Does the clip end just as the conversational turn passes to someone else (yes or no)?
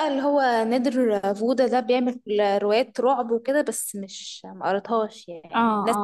yes